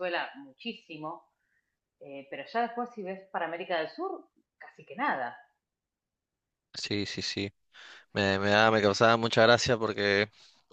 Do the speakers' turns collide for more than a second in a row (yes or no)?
no